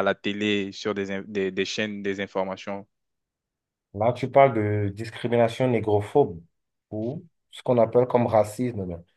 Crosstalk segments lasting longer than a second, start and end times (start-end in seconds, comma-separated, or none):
none